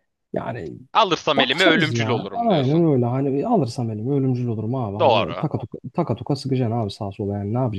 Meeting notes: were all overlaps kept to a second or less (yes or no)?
no